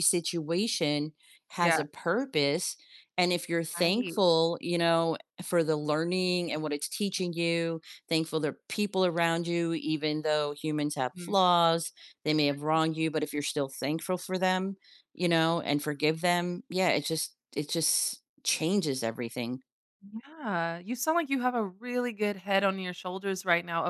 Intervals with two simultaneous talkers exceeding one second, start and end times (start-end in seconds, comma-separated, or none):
none